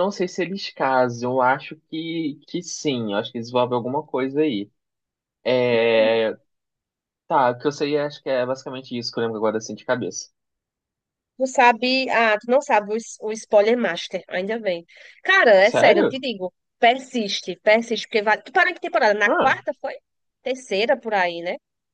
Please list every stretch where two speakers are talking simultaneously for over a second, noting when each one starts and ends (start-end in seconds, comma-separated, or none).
none